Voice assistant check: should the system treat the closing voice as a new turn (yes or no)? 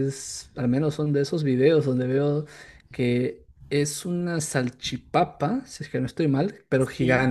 no